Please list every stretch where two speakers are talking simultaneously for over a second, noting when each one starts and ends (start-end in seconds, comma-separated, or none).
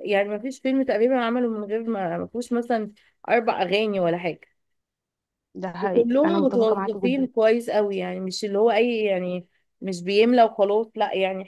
5.8-7.3